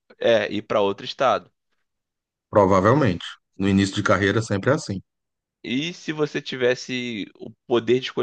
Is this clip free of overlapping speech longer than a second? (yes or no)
yes